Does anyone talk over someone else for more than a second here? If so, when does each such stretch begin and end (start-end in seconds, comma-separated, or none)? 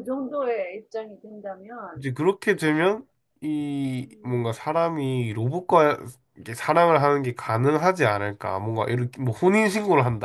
none